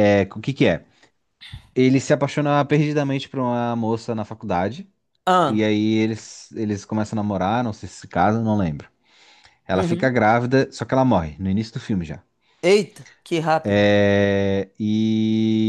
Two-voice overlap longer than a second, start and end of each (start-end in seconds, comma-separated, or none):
none